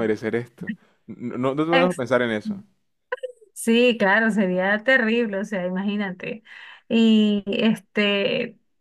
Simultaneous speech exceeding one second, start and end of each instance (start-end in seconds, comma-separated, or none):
none